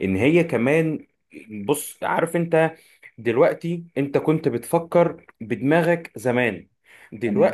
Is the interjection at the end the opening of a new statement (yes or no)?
no